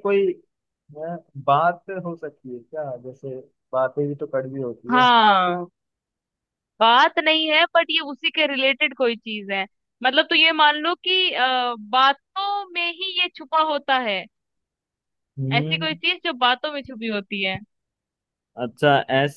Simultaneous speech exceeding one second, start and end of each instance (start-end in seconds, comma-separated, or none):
none